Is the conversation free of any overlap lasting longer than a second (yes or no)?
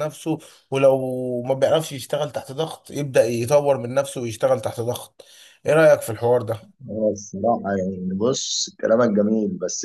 yes